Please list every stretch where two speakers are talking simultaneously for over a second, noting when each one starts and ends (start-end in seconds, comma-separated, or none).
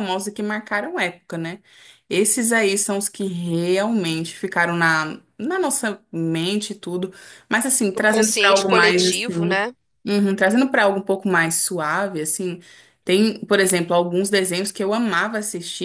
8.0-9.6